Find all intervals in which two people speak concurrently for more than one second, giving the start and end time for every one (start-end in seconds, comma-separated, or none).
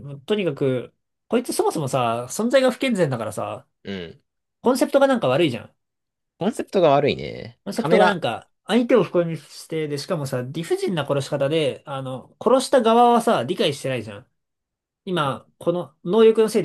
none